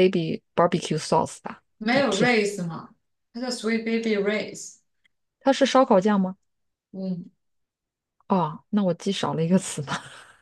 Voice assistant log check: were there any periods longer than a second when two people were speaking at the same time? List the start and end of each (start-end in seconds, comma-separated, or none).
none